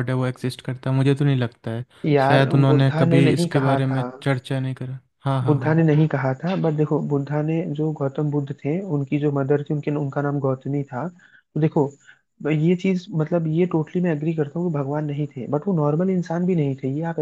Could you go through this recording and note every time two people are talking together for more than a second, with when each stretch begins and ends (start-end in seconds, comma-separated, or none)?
2.3-4.1